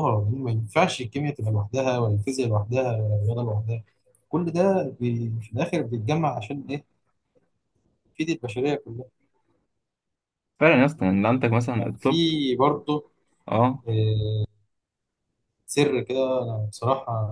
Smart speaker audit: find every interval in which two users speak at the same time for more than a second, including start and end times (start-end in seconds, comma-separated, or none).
11.0-12.2